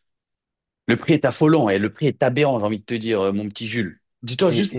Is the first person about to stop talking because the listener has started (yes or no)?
no